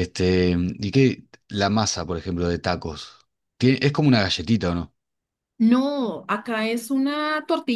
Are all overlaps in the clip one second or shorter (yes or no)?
yes